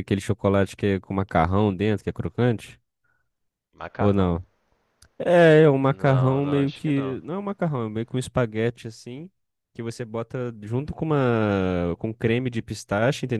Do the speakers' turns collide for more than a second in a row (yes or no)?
yes